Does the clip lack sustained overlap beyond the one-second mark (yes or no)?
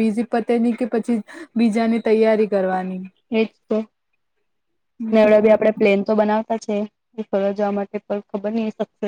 yes